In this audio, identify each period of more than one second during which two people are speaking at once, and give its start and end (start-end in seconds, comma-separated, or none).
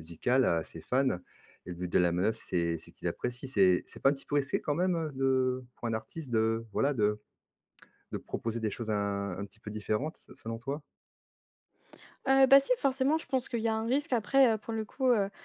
none